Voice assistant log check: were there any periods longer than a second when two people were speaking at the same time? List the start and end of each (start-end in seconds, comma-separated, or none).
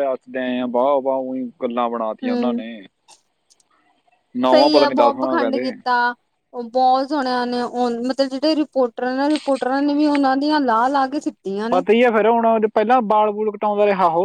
4.5-5.7